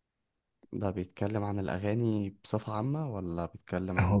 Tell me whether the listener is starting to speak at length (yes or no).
yes